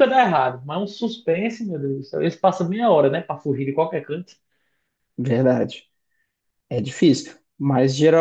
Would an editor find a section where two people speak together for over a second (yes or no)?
no